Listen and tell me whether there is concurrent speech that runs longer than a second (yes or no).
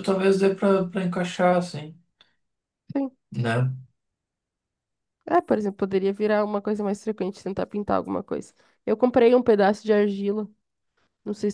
no